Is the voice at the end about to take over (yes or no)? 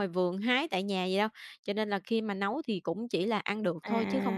yes